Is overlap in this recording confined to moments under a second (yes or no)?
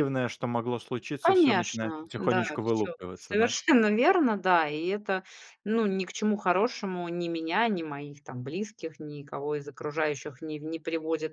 no